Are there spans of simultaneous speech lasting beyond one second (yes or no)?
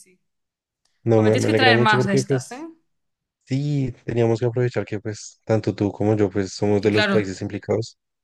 yes